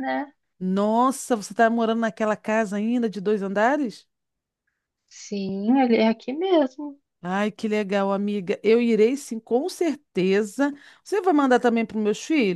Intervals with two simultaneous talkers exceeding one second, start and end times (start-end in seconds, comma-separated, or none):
none